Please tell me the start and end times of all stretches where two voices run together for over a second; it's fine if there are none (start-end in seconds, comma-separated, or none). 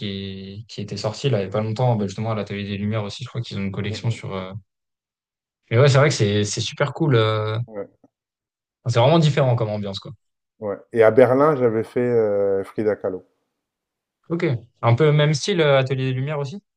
none